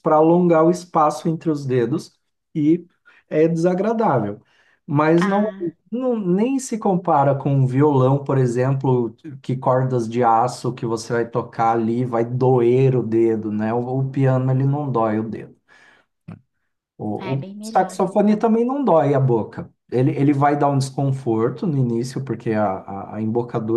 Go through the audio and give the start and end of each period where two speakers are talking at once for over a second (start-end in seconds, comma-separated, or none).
17.2-18.4